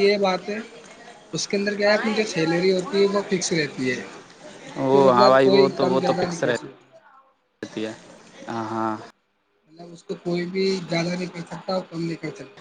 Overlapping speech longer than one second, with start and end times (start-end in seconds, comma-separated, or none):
4.8-6.4